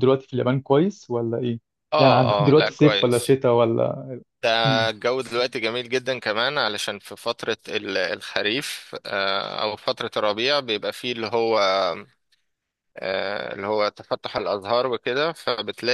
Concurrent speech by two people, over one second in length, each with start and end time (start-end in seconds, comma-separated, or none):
2.0-3.4